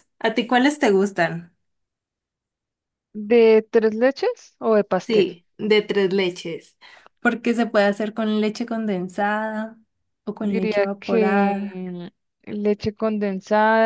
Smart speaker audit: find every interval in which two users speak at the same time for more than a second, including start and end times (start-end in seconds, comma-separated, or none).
10.4-11.8